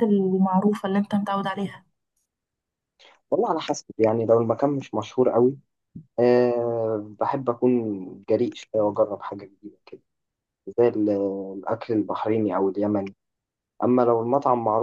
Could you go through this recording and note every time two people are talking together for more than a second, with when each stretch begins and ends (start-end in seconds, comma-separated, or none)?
none